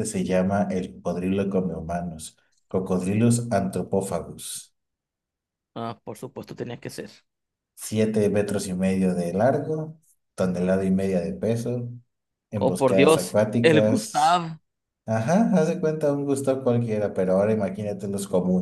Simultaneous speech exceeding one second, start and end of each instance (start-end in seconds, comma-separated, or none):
12.6-14.5